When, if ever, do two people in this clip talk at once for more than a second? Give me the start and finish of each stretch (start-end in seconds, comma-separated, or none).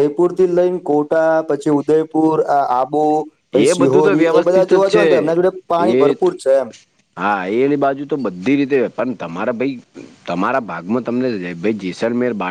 3.5-5.1